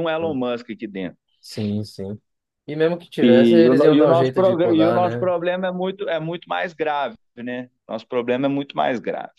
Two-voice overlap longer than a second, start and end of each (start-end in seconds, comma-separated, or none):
3.2-5.3